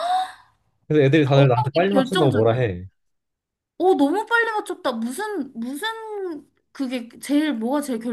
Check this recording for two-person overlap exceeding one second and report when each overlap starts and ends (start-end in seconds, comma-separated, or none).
1.3-2.6